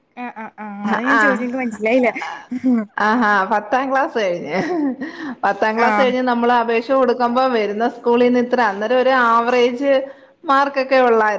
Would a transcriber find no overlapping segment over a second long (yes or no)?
yes